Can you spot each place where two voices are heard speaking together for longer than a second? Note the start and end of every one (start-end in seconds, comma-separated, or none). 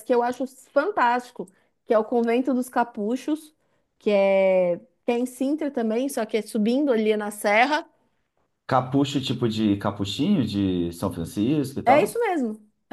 none